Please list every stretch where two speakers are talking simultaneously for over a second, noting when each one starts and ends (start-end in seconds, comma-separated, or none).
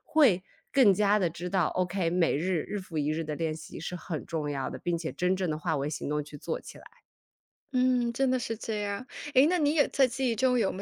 none